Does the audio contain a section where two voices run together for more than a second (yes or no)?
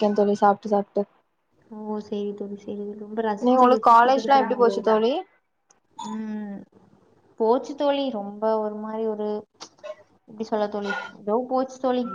yes